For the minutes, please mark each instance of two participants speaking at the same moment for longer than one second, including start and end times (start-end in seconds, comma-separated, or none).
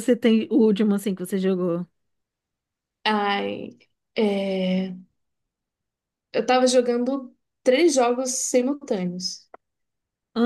none